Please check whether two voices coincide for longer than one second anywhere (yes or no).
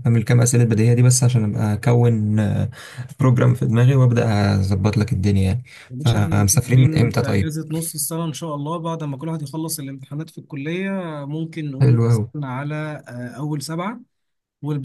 yes